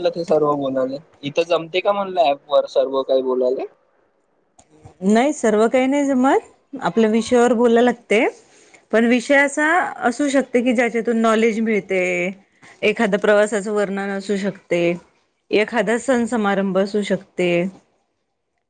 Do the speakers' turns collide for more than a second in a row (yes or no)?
no